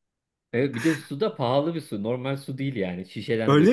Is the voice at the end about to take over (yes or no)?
no